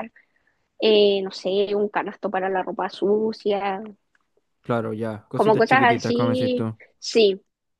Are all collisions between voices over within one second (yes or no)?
no